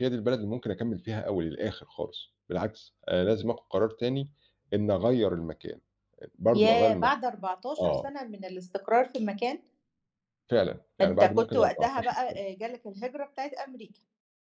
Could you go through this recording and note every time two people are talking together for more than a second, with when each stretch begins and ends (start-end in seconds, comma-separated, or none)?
11.0-12.4